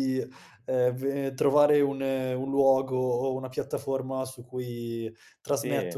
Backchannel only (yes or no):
no